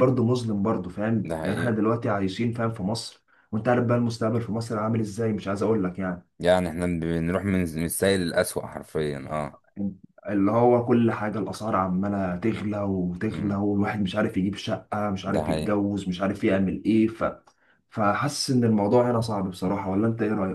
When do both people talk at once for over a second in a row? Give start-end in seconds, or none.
none